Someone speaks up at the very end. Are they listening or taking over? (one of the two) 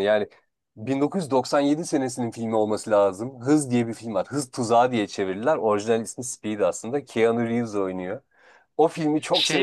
listening